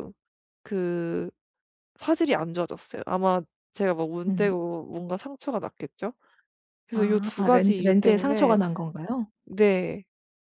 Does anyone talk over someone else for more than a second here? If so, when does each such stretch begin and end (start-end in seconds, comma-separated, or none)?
6.9-8.6